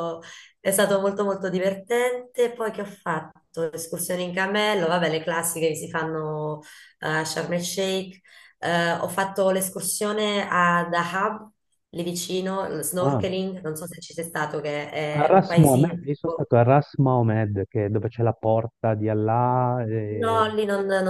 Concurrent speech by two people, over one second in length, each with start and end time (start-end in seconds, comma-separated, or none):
15.2-16.4